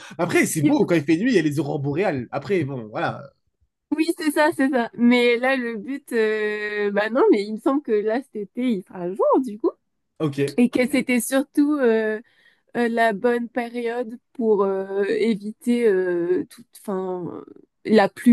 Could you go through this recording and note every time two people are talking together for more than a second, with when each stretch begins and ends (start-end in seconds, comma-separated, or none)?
none